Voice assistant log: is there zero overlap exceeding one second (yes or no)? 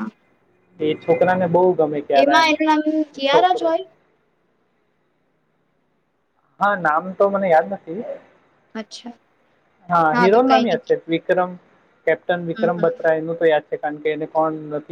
yes